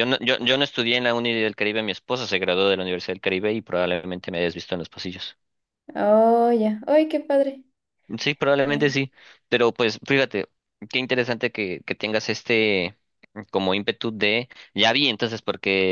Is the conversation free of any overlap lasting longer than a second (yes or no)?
yes